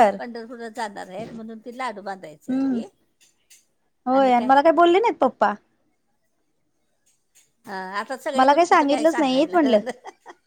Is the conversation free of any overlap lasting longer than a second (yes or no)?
no